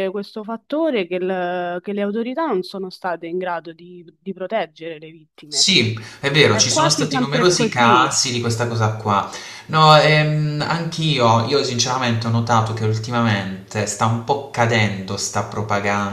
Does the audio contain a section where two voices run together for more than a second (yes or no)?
yes